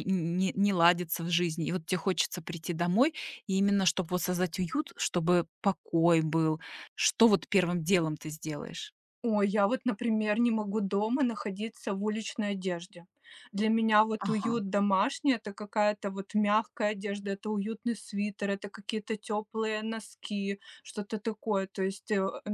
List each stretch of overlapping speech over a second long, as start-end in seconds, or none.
none